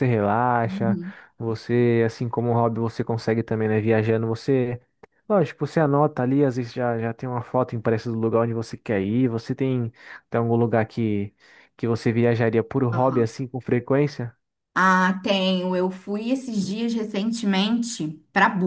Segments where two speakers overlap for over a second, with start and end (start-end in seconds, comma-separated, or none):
none